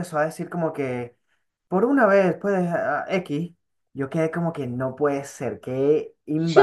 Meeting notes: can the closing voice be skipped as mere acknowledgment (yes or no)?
no